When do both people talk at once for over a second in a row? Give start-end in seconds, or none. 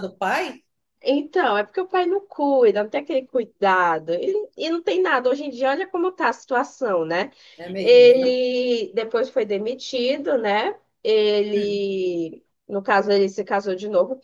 none